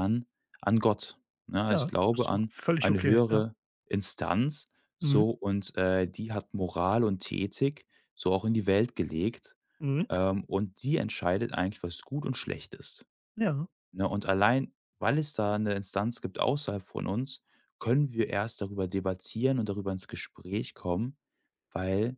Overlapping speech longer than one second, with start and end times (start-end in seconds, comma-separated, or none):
1.7-3.5